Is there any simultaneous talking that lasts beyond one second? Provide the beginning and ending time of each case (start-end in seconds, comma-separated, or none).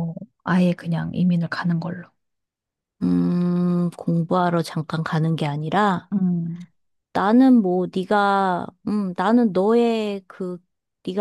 none